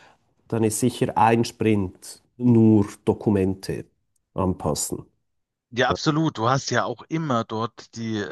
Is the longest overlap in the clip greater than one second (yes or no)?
no